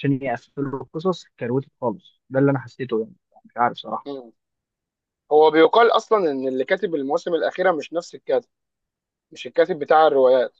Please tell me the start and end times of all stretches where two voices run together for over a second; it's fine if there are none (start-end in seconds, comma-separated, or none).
none